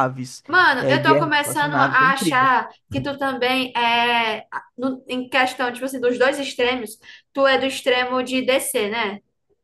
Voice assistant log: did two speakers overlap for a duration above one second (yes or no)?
yes